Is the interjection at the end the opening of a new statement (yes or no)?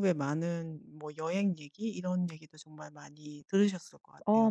yes